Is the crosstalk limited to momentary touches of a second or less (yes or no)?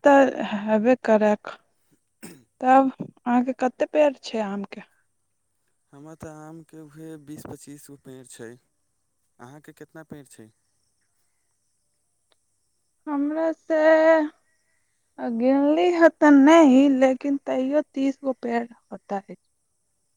yes